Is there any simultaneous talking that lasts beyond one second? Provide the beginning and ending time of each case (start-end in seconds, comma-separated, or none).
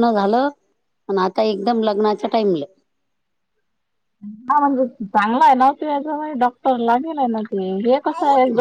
none